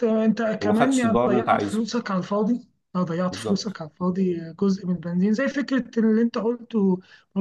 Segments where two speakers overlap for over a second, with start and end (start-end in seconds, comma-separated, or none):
0.6-1.9